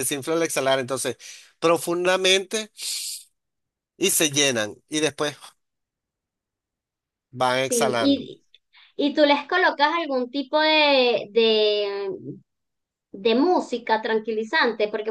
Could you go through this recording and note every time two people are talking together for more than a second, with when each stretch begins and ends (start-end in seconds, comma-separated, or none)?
none